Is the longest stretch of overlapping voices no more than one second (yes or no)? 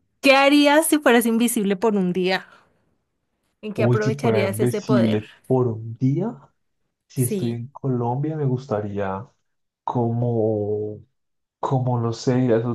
no